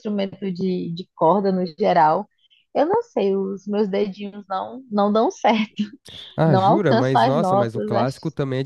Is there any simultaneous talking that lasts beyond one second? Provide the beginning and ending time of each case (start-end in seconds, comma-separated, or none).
6.5-8.1